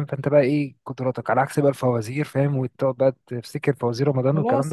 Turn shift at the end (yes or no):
yes